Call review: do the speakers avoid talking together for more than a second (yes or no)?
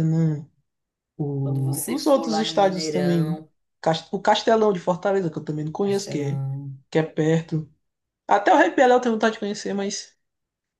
no